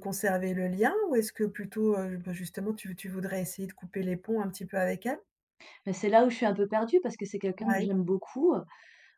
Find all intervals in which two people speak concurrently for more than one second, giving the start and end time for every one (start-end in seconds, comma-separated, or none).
none